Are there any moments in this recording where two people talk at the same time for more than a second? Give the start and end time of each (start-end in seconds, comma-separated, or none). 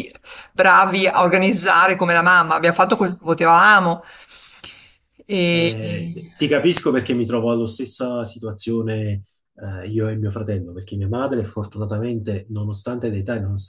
none